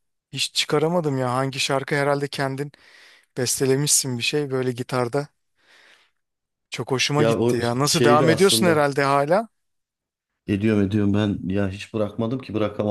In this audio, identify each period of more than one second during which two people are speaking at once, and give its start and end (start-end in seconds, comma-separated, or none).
7.2-8.9